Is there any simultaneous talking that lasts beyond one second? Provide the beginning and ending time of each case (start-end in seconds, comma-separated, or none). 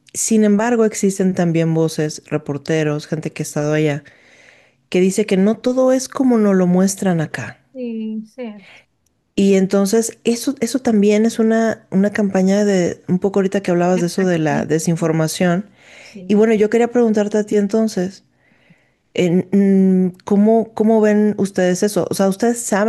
13.9-15.1